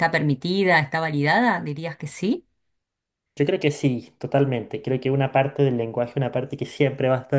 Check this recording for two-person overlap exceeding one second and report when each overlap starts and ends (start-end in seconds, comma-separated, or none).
none